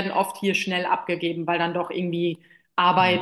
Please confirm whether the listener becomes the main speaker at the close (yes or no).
no